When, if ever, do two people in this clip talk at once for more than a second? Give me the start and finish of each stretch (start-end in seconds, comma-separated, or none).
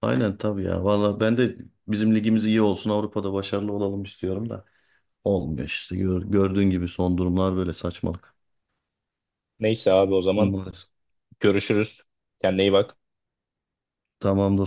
none